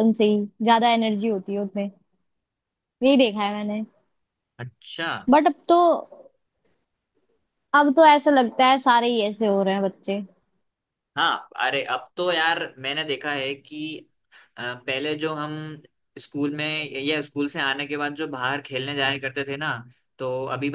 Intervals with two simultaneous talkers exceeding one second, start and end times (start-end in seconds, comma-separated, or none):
none